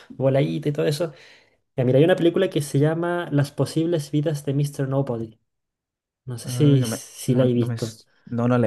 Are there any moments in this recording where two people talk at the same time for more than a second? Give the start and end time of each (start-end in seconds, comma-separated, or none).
6.4-8.0